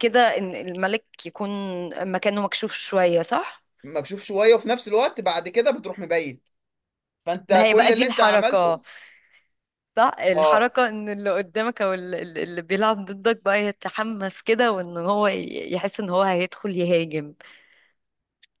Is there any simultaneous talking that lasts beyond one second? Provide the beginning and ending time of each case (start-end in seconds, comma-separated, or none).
7.5-8.8